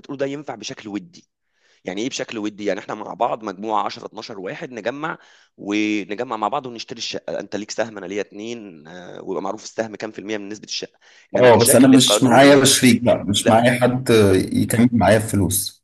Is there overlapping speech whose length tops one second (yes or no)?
yes